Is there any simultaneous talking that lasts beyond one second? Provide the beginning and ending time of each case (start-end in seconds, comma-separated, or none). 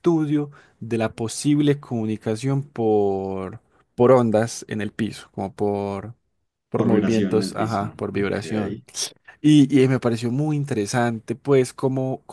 6.7-8.4